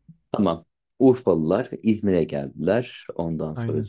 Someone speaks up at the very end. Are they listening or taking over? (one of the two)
listening